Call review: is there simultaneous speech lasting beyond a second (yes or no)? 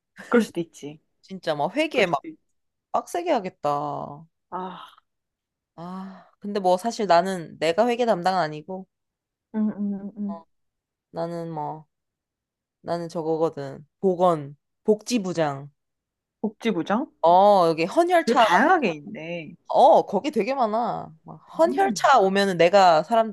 no